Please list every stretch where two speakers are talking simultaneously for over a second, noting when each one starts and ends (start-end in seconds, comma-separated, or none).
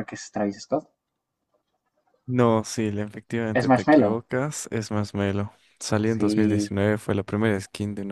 none